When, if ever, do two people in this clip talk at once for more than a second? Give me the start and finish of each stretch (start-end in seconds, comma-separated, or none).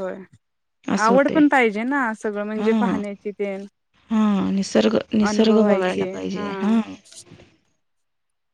5.3-6.8